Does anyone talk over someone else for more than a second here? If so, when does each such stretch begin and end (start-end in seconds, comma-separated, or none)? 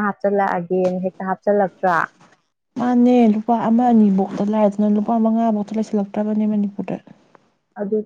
none